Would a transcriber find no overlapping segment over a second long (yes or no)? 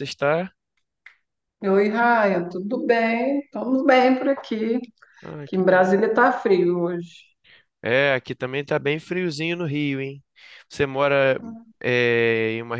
yes